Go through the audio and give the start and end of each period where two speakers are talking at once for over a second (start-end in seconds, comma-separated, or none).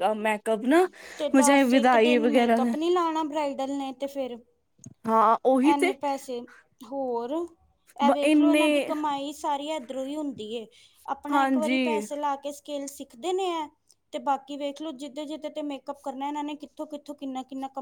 1.5-2.7